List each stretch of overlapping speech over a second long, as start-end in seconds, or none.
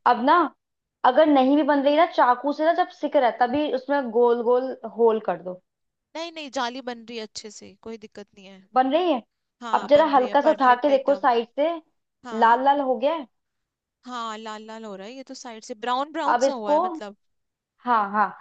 9.7-11.3